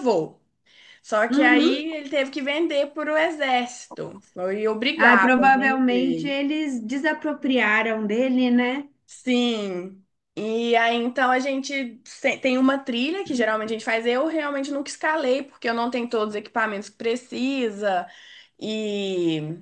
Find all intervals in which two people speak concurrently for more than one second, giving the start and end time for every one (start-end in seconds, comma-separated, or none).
5.0-6.3